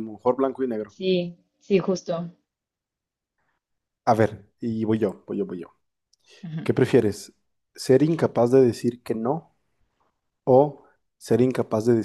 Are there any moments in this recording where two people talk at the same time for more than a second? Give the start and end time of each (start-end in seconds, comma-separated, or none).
none